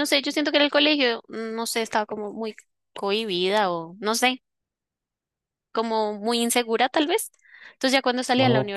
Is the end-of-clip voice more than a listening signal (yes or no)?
no